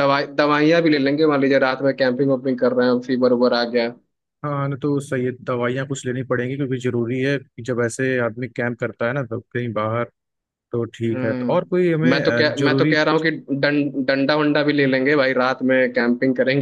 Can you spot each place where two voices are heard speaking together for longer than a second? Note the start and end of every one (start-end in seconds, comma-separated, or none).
11.1-12.9